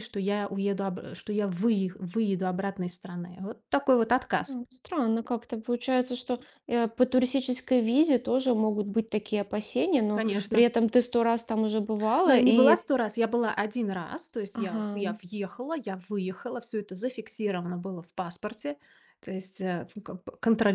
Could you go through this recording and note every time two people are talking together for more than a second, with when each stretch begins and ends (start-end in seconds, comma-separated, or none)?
none